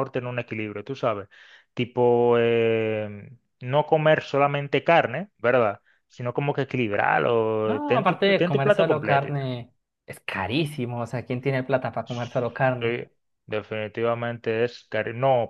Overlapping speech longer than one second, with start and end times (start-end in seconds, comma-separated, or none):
7.6-9.4